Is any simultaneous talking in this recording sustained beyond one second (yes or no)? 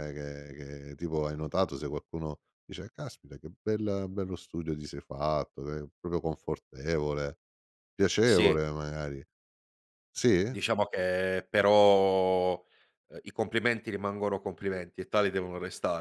no